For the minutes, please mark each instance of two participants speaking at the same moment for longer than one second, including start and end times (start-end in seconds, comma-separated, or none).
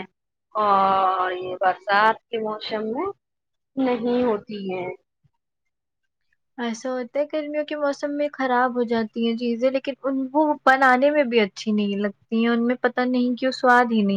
none